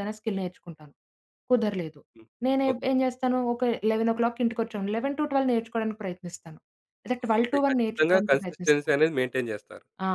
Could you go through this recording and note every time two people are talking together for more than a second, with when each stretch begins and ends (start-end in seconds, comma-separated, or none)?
7.4-8.9